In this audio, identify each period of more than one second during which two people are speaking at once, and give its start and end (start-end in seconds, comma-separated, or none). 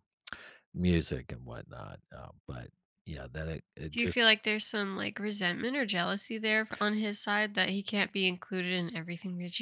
none